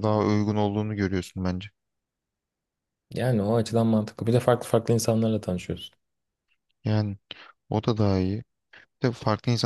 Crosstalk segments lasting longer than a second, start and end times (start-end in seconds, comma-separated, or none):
none